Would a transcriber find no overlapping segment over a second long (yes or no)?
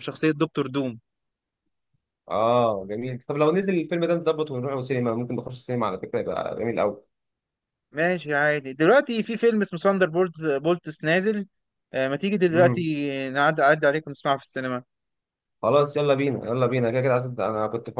yes